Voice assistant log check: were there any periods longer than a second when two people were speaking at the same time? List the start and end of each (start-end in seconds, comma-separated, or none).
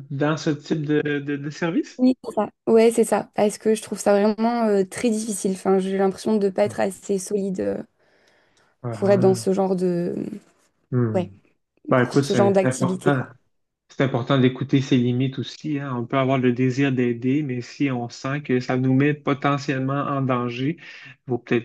12.0-13.2